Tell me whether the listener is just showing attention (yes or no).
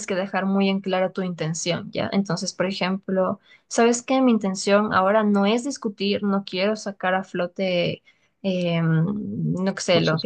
yes